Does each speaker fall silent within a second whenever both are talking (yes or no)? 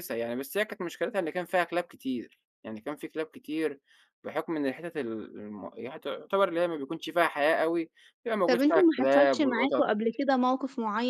no